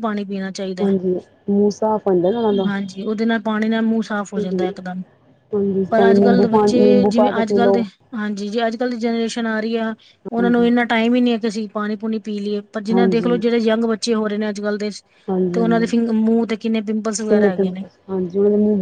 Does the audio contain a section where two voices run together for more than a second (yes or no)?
yes